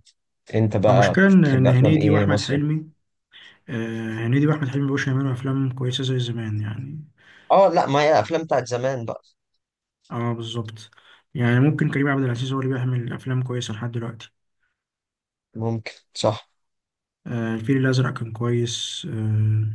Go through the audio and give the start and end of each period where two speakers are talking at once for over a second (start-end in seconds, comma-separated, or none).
0.9-2.6